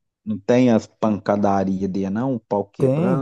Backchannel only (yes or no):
no